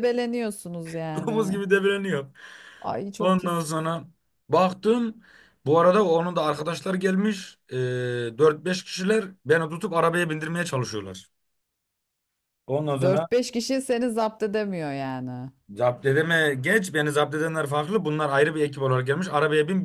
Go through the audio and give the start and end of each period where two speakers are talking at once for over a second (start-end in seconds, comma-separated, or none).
none